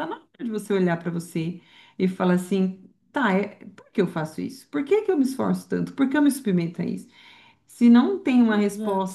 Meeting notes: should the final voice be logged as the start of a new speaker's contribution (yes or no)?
no